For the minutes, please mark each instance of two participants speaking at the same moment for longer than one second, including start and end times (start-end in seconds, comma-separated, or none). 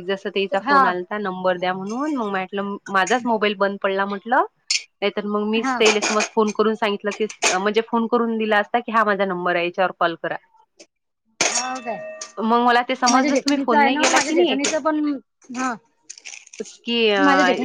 13.1-14.6